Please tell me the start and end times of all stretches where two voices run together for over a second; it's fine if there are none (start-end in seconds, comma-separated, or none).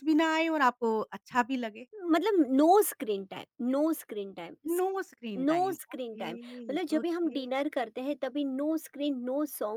5.4-7.5